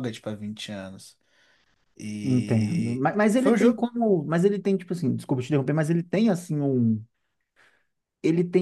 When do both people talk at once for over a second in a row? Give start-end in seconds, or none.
2.2-3.8